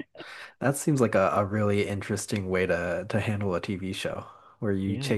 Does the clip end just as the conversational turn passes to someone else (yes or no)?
no